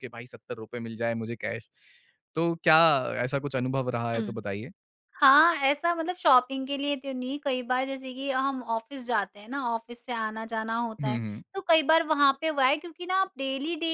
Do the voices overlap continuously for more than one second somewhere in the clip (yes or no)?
no